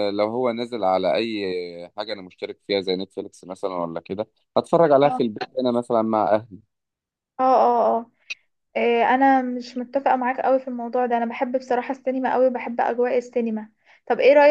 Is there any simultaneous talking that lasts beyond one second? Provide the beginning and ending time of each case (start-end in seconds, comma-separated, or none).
none